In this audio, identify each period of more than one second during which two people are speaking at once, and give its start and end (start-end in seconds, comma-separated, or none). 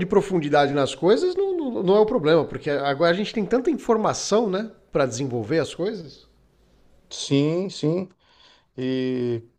none